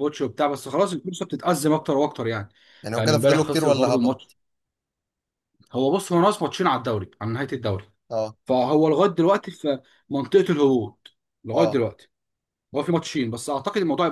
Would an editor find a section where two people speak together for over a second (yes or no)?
yes